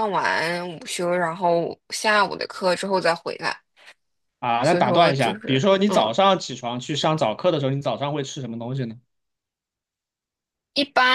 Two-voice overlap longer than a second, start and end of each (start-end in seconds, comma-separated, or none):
4.6-6.1